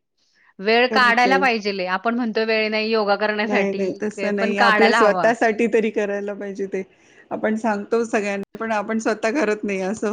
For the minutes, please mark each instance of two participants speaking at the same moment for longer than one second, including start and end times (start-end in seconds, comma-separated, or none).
3.5-5.2